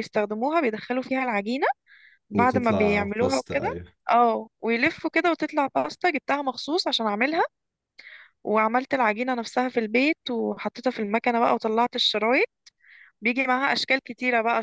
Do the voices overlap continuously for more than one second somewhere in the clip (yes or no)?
yes